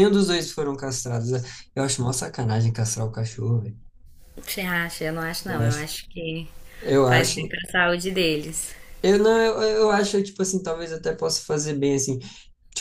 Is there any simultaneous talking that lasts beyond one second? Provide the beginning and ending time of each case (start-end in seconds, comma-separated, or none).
none